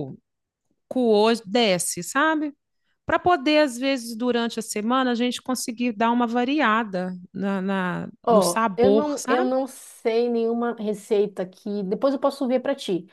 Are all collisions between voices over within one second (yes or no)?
no